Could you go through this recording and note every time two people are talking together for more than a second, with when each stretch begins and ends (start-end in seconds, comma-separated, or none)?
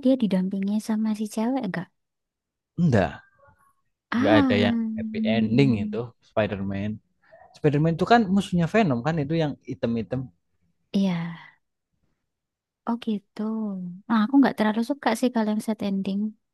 4.2-6.0